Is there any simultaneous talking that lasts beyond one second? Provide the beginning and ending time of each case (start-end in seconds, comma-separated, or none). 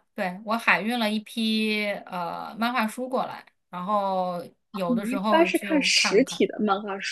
4.9-6.4